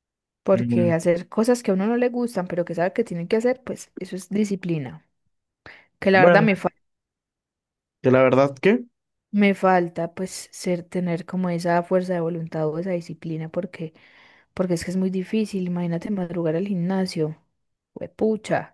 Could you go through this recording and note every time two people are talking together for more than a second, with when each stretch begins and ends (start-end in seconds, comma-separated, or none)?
none